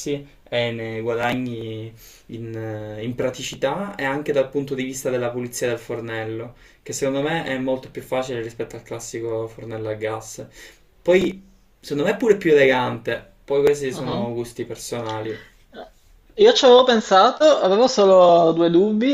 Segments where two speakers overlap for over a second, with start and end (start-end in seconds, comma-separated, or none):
none